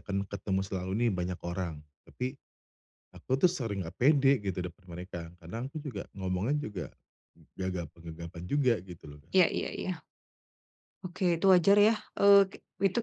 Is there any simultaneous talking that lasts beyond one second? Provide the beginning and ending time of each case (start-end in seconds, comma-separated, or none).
none